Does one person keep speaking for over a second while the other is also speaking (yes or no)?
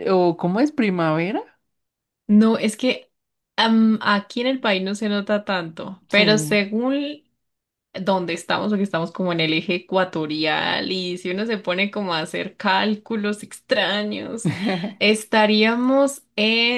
no